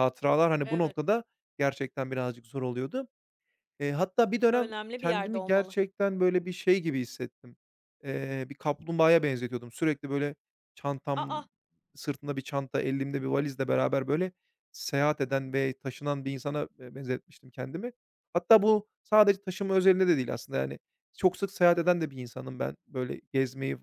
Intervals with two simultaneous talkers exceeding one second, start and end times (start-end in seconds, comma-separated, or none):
4.5-5.8